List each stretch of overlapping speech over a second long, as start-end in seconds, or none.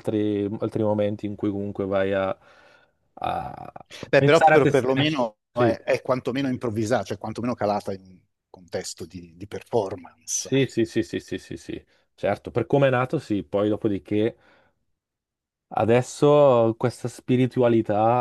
4.2-5.8